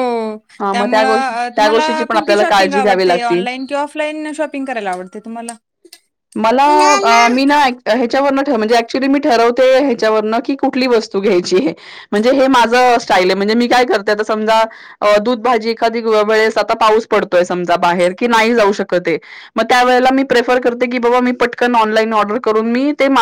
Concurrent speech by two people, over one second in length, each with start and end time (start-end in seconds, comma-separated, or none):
0.7-3.4